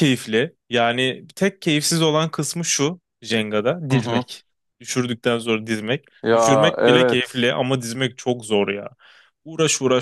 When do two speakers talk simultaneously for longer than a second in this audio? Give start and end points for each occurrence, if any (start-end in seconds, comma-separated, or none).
6.2-7.5